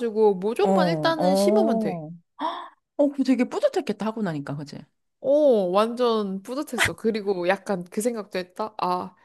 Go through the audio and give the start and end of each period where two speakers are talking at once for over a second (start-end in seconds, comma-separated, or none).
0.6-2.0